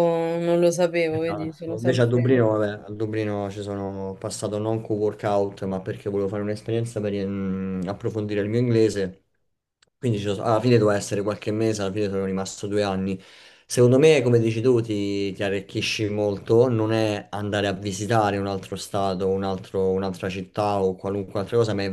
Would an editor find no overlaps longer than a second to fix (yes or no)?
no